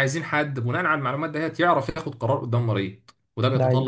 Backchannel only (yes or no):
yes